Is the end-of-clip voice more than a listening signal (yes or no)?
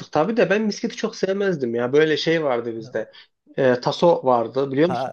yes